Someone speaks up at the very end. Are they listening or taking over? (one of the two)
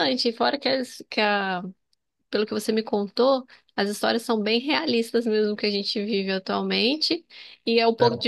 listening